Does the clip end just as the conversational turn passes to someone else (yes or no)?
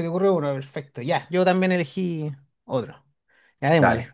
no